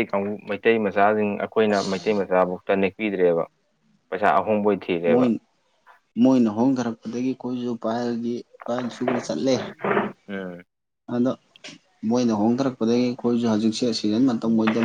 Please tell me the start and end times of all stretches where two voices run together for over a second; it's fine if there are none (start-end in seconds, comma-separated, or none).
none